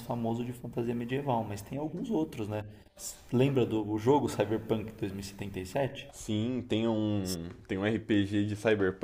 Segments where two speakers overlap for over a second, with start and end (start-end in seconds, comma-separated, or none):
none